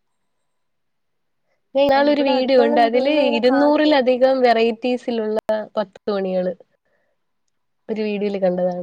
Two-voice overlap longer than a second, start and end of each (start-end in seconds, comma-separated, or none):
2.1-4.1